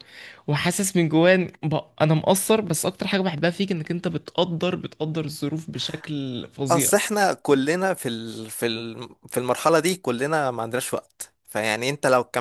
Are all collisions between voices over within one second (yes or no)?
yes